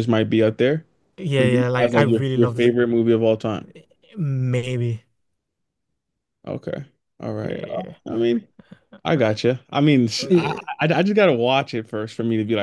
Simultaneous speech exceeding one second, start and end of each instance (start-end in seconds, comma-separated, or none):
1.4-2.7